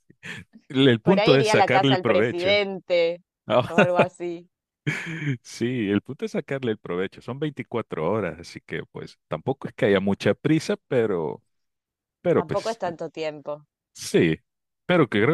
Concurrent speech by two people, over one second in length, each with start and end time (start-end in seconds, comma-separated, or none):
1.0-2.6